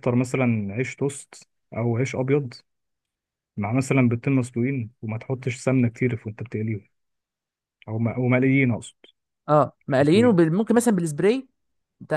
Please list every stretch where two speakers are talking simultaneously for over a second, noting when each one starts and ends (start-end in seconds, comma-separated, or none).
none